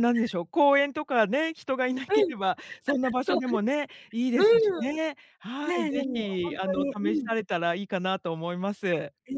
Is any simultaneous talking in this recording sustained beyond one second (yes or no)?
yes